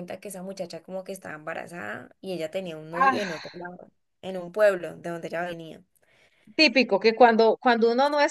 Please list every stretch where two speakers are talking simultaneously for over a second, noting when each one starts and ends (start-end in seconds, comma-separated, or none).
none